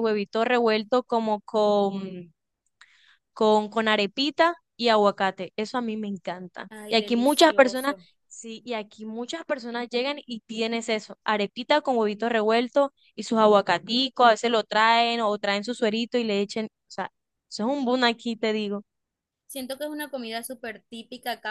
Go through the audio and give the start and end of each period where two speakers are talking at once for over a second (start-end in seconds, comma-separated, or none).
6.7-8.0